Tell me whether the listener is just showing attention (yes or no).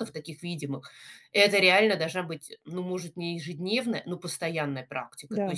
yes